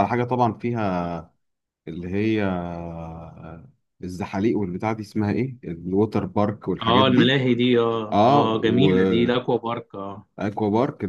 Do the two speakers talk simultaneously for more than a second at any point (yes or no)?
yes